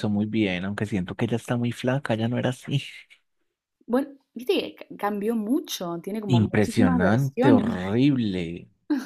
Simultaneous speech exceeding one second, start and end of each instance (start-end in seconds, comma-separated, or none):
6.4-8.0